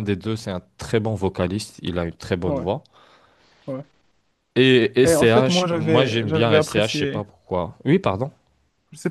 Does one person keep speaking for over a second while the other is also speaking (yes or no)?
yes